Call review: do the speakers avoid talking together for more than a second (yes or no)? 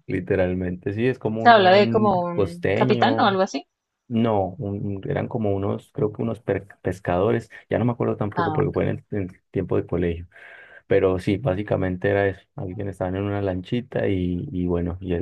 no